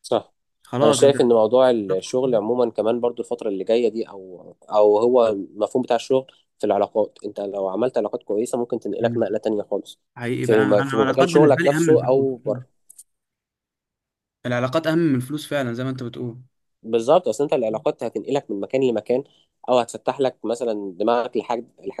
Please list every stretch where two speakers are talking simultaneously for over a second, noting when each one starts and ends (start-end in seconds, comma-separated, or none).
10.4-12.6